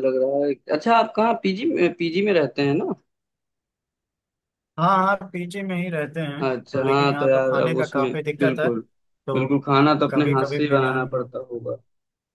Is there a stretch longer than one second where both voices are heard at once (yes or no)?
yes